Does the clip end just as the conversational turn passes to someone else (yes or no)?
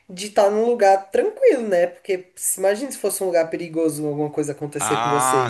yes